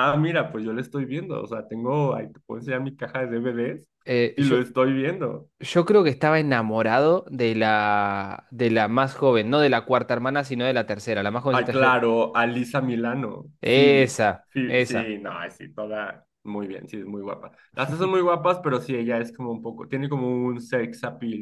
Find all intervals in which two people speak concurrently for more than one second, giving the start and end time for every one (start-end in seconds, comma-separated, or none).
13.6-15.2